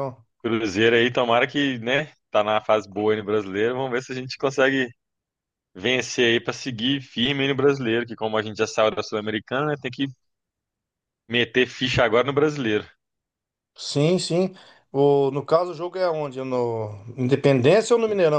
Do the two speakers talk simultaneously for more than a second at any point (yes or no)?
no